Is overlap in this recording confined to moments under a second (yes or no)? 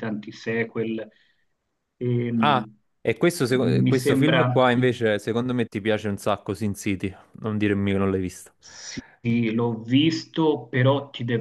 no